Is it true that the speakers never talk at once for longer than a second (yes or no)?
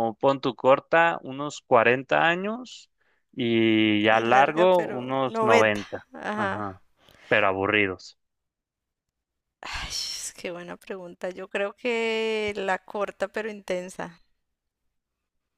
no